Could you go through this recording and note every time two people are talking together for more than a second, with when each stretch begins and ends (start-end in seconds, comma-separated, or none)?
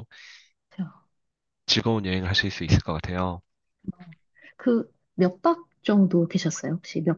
none